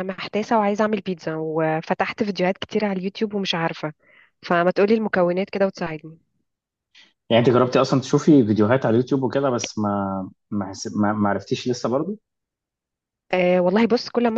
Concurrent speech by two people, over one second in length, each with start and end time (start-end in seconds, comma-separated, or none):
none